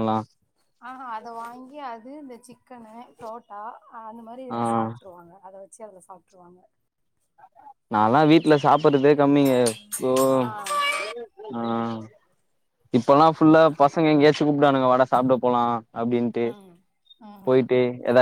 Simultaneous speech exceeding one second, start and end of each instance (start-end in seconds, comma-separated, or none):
none